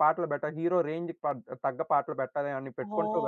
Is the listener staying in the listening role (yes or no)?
no